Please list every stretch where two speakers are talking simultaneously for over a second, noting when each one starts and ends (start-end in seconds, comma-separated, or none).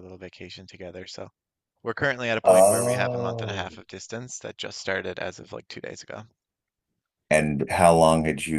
2.4-3.8